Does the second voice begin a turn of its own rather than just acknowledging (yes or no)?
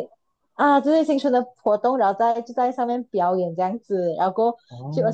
no